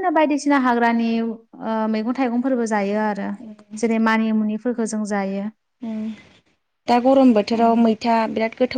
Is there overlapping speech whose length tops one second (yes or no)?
no